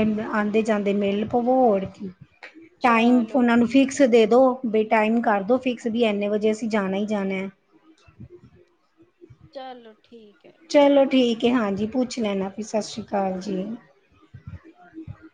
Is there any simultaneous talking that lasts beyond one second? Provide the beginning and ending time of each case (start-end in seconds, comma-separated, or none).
2.9-4.1